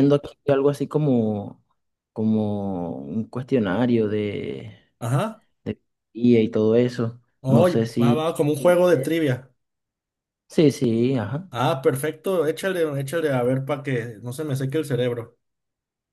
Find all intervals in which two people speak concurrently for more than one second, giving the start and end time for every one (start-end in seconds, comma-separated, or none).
7.4-9.1